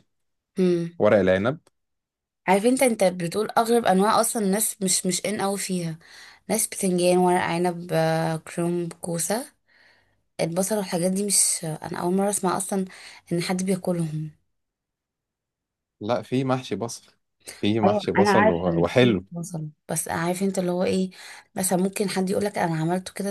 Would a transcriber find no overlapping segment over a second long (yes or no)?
no